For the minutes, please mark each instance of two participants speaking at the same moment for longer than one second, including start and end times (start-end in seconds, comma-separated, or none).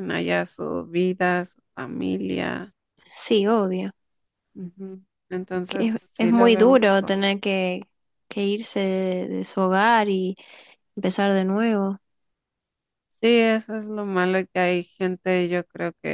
5.7-7.2